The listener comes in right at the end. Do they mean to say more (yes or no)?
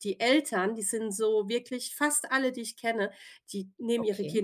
no